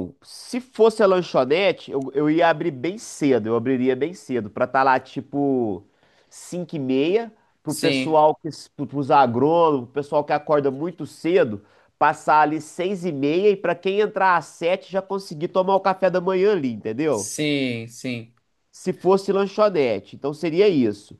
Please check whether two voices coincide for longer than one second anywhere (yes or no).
no